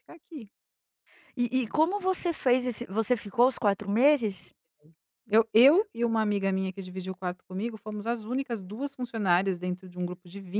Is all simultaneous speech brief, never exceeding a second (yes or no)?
yes